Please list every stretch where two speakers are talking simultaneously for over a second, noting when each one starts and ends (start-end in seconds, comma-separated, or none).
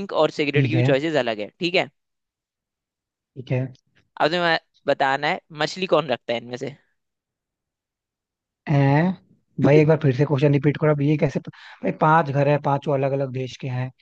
none